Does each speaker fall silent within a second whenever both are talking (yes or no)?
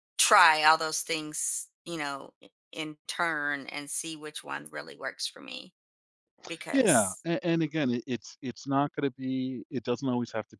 yes